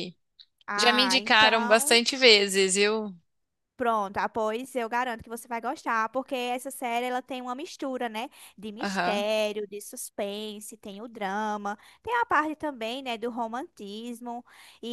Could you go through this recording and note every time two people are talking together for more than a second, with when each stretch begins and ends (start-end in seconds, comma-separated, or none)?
0.8-2.0